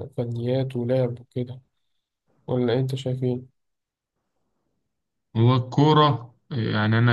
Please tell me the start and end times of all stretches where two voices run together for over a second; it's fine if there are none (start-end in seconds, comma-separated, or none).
none